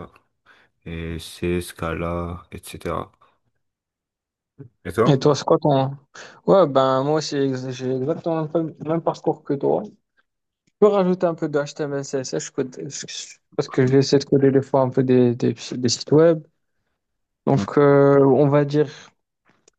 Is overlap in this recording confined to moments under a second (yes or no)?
yes